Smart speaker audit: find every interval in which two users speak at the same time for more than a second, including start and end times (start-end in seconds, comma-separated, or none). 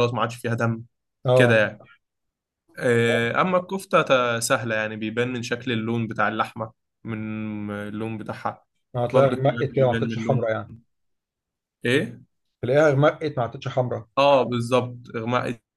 9.1-10.5